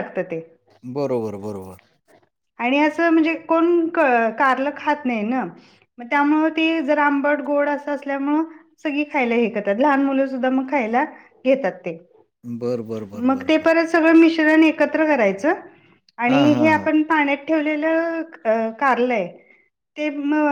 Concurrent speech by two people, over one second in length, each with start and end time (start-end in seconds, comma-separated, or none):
none